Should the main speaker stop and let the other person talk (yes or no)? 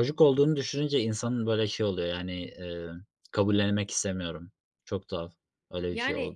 no